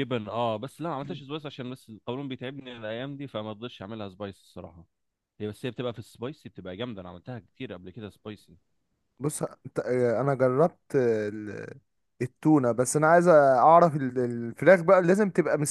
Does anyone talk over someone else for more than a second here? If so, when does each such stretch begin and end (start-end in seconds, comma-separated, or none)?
none